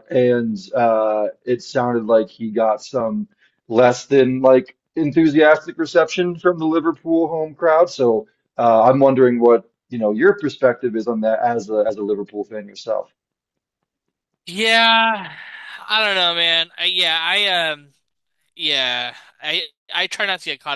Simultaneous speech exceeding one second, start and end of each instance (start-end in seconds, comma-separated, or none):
none